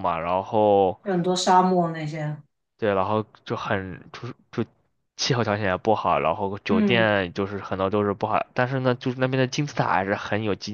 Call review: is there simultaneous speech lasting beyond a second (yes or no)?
no